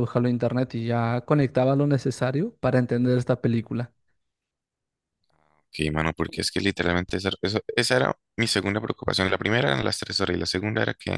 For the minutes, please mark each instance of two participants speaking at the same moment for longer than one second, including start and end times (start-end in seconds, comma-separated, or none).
none